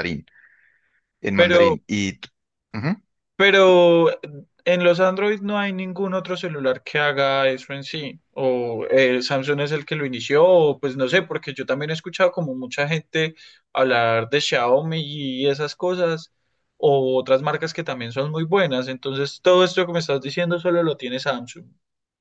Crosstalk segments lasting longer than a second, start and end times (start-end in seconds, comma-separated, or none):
none